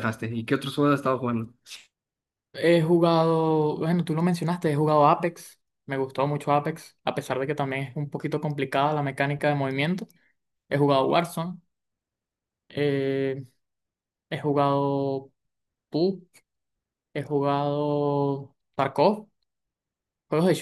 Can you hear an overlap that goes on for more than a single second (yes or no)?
no